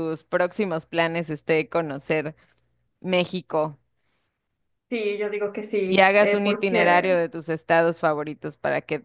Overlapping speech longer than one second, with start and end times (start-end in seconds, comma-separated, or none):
5.9-7.2